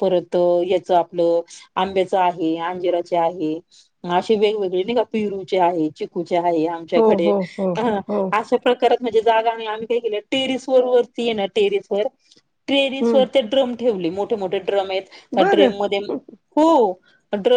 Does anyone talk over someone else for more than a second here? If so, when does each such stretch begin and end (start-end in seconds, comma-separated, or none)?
none